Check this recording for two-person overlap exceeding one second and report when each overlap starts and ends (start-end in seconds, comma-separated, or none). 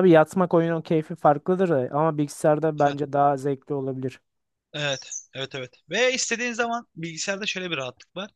none